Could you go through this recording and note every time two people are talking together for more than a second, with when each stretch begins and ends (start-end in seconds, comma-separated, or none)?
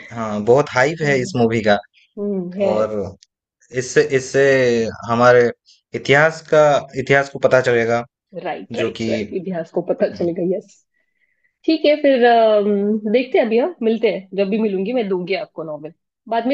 none